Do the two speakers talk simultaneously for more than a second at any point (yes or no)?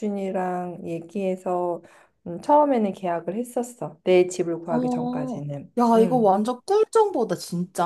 yes